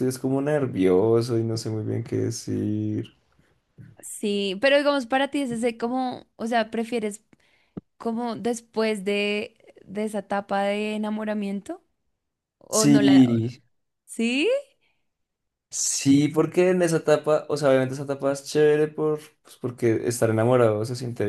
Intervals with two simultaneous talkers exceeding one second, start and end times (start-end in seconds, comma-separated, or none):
none